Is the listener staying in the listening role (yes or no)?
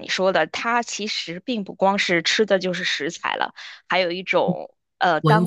yes